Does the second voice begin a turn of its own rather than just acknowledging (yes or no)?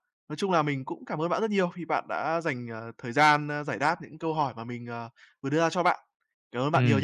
yes